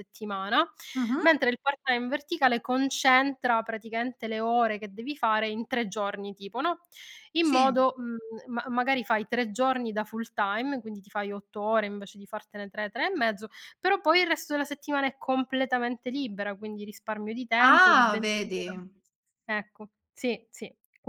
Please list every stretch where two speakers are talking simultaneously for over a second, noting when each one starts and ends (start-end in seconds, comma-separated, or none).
17.6-18.8